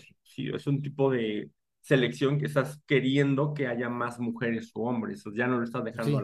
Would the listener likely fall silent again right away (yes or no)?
no